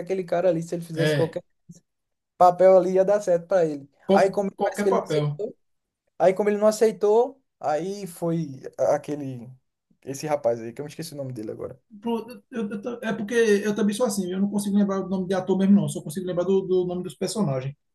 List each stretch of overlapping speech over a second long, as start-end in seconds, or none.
4.0-5.4